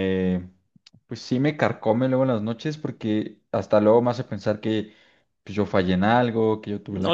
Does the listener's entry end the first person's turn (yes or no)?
yes